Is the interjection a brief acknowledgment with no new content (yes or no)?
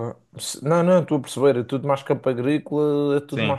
yes